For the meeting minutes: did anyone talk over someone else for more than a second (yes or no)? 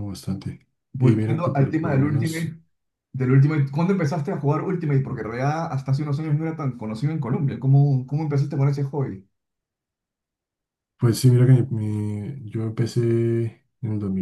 yes